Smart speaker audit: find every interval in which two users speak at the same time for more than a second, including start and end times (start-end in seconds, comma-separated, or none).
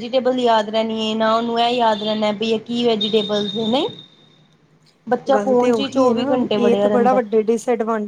5.3-7.2